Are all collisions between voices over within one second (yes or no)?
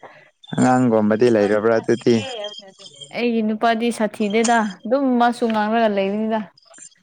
no